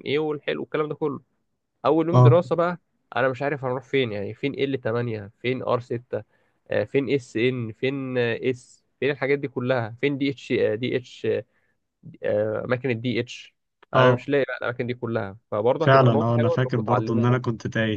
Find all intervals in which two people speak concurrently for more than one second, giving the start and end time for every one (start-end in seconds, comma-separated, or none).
15.8-17.4